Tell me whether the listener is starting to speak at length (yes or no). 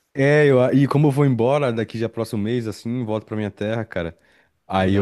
no